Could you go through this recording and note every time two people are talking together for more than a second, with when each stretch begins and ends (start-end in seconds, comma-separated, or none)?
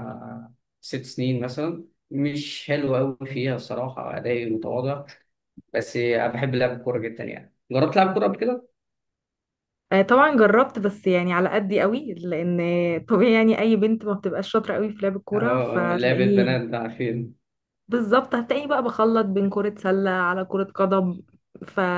15.3-16.6